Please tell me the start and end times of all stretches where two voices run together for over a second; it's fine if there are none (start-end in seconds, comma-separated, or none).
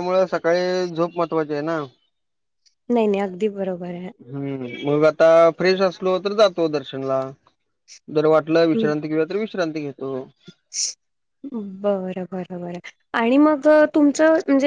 none